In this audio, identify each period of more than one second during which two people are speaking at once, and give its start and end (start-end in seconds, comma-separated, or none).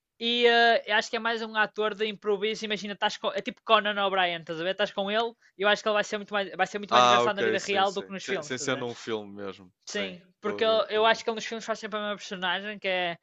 6.9-8.8, 9.8-11.2